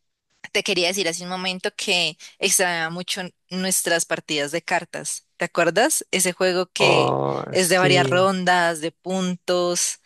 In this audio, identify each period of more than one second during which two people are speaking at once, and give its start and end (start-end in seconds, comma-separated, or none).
6.8-8.3